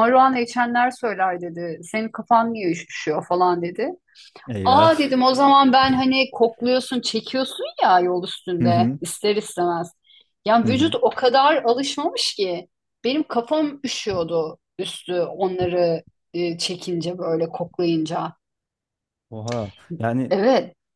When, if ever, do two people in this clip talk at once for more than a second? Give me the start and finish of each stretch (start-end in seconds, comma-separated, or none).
none